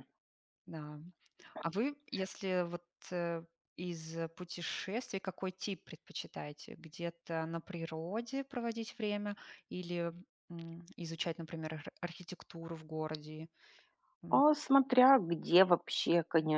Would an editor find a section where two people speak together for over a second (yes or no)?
no